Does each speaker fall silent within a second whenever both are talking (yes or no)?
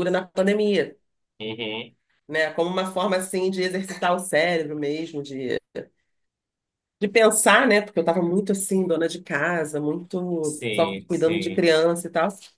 no